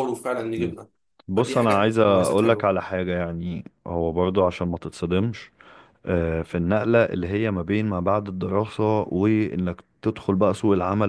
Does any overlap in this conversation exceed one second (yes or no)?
yes